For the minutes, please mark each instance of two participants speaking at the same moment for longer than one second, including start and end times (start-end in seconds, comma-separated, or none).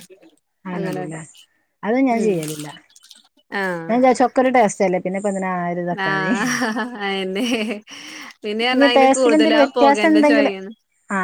8.7-10.5